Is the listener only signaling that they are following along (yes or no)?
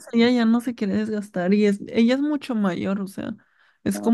yes